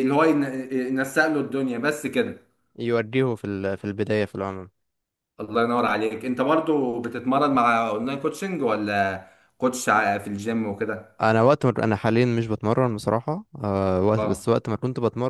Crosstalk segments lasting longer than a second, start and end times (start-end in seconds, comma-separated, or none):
none